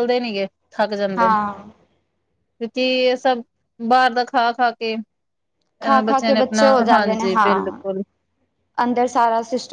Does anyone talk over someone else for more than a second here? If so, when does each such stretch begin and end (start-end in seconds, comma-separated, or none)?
6.0-7.8